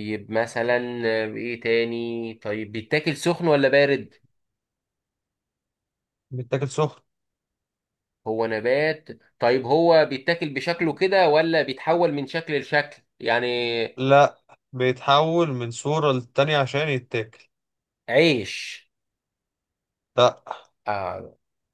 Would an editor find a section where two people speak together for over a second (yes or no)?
no